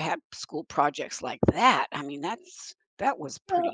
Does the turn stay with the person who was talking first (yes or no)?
no